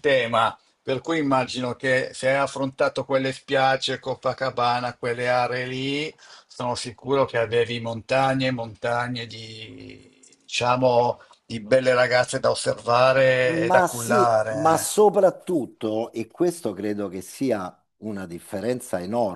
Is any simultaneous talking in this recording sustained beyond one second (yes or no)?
yes